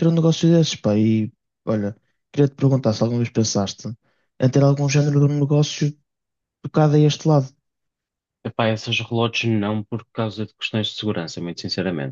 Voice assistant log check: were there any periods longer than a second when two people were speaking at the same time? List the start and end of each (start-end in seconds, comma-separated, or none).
none